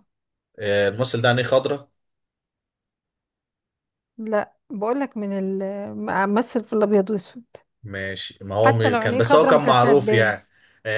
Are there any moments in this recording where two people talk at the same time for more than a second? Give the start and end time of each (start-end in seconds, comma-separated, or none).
8.6-10.3